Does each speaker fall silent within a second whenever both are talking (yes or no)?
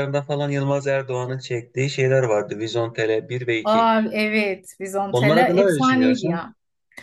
no